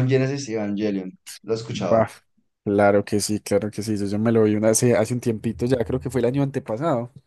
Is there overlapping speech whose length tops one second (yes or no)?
no